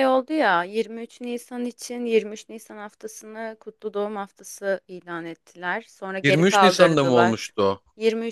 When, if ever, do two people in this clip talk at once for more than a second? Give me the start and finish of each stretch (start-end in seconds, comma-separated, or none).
6.2-7.5